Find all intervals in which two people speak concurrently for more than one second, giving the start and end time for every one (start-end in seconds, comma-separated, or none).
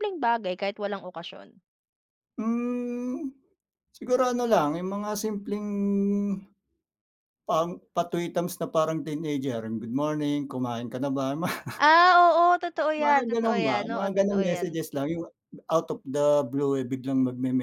12.9-14.8